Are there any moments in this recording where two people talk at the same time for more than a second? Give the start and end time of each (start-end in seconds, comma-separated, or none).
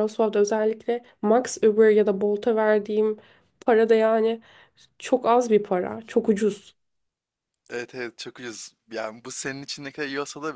none